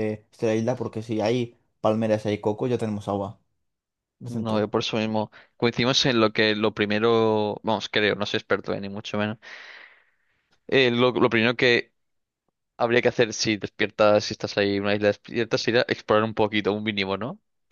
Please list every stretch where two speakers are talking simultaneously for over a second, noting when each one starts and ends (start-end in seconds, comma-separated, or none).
none